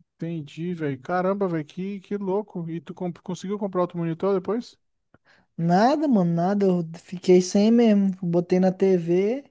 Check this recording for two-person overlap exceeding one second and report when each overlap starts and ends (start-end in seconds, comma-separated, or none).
none